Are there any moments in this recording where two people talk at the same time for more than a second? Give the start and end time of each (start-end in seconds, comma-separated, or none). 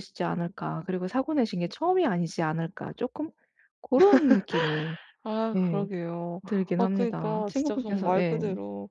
6.8-8.4